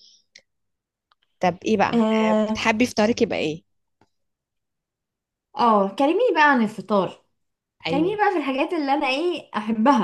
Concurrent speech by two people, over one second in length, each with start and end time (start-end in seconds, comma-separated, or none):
none